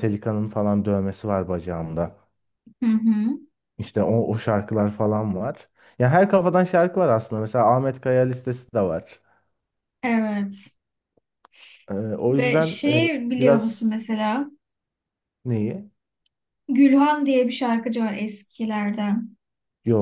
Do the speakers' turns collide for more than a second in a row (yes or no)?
yes